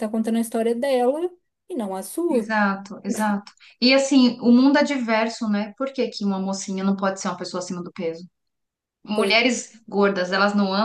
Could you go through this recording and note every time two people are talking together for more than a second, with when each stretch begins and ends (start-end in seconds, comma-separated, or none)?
none